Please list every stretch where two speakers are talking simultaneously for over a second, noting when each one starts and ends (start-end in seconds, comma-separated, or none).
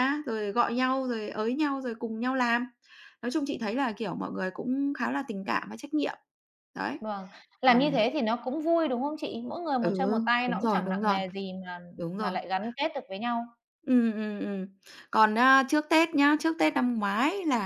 9.8-11.2